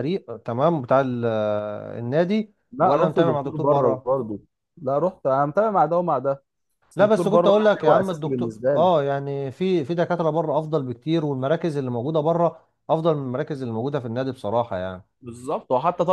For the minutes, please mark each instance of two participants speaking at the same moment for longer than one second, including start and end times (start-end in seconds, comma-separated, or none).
2.7-4.1, 7.0-8.9